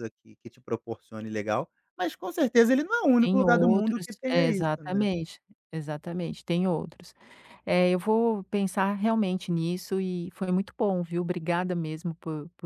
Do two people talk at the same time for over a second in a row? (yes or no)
yes